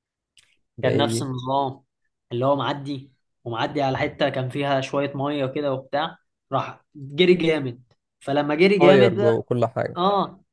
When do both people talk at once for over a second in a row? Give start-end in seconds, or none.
none